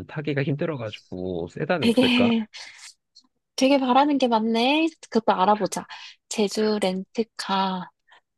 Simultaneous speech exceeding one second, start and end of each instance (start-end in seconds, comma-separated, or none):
none